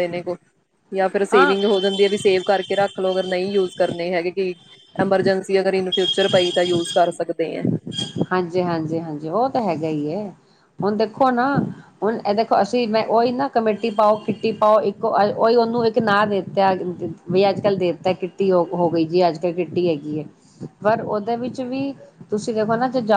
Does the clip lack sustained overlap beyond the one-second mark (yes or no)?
yes